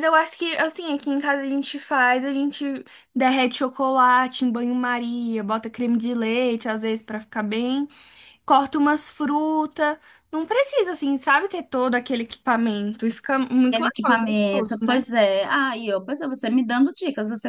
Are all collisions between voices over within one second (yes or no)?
no